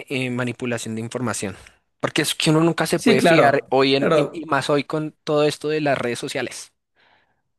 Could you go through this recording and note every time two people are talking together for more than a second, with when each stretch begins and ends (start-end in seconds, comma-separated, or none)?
2.9-4.5